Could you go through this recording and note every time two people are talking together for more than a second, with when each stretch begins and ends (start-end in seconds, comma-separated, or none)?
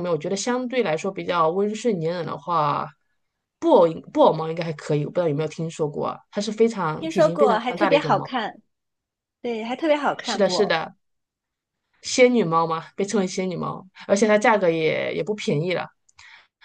7.0-8.3